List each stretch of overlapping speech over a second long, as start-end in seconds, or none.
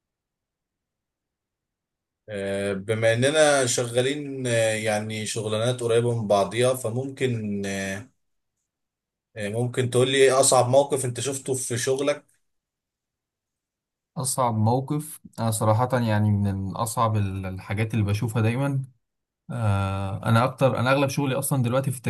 none